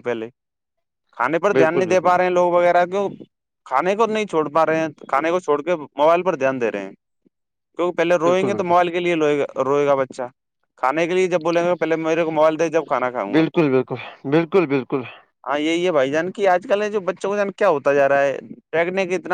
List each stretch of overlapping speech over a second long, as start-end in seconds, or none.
none